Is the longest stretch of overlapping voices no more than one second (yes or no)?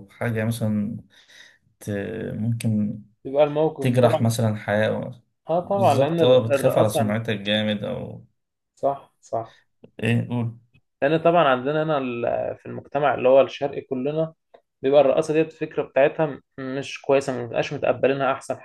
no